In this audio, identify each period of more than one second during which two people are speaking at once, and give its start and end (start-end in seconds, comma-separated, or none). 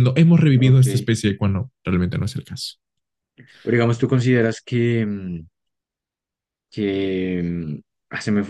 none